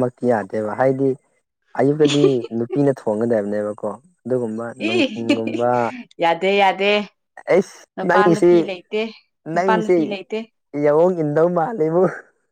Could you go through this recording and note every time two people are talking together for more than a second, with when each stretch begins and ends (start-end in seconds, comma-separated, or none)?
none